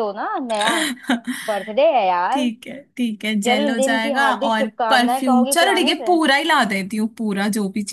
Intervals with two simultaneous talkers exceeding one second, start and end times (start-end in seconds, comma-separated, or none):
3.4-6.2